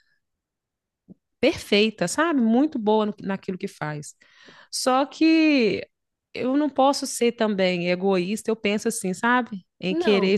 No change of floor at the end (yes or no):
yes